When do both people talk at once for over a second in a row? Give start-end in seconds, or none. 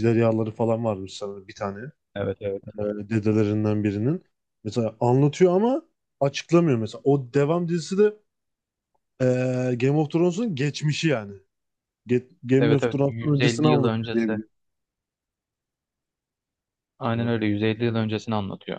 12.6-14.4